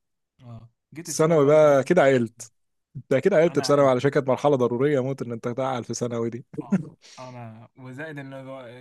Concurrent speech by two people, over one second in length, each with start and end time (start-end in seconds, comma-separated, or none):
1.1-2.5